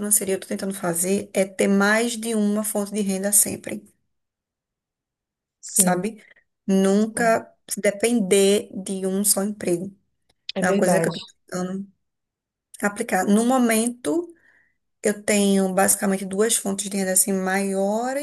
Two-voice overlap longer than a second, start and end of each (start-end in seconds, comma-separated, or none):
none